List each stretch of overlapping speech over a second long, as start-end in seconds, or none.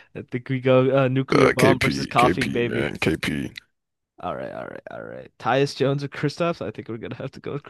1.3-2.9